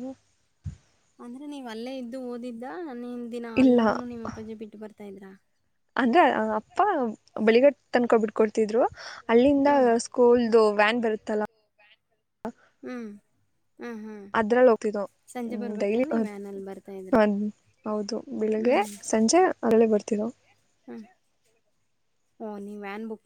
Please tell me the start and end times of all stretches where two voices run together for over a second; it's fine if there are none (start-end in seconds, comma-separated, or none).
none